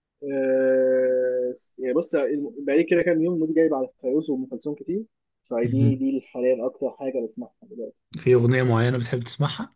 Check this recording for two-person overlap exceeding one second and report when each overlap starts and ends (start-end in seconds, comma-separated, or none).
none